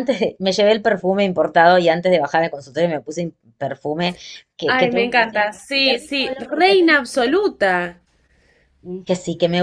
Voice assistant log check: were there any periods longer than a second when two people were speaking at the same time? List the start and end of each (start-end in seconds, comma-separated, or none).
4.7-6.8